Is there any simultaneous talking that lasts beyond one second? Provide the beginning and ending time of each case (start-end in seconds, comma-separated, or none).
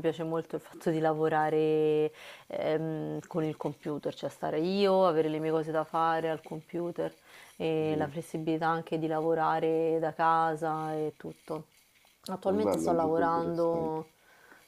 12.5-14.0